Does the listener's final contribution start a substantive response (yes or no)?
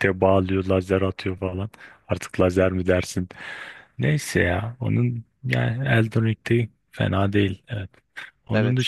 no